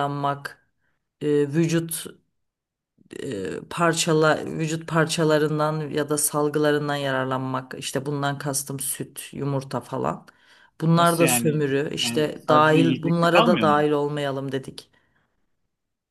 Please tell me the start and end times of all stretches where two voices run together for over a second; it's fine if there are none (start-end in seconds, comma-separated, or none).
10.9-13.8